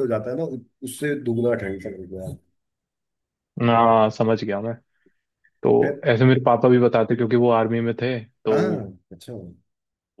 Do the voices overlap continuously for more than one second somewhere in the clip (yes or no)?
no